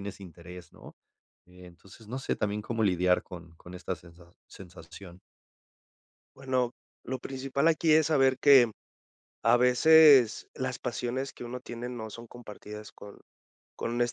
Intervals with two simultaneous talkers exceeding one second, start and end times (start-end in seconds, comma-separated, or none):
none